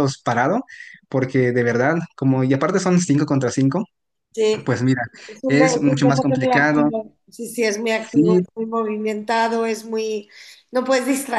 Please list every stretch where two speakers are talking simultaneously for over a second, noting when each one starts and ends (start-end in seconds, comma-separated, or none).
5.5-6.9